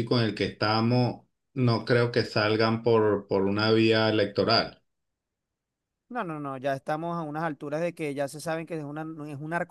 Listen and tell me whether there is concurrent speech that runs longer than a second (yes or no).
no